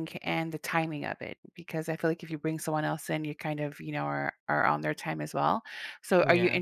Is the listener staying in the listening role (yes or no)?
yes